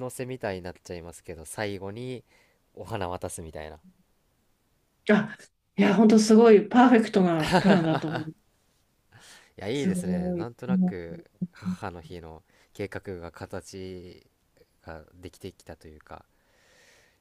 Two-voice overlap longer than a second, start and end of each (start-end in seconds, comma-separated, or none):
9.7-11.0